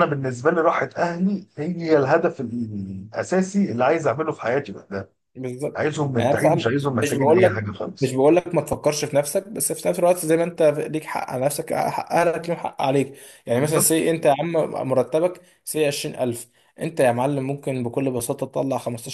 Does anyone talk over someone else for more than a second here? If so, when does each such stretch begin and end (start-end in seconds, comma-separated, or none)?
5.7-8.2